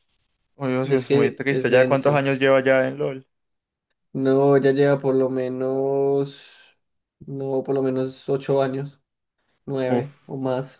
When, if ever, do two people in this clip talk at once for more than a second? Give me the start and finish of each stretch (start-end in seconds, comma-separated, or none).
0.8-2.2